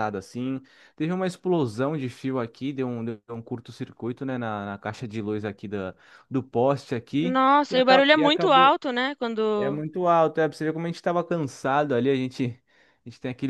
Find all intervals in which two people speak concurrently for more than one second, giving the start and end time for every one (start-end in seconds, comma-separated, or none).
7.2-8.7